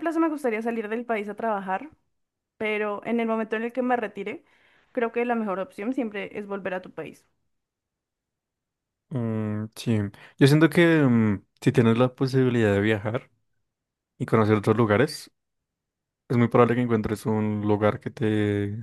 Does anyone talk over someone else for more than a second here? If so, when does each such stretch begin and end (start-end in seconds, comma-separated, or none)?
none